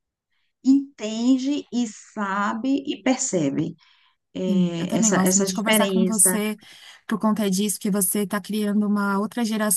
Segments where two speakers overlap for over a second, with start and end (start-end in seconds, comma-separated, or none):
4.5-6.4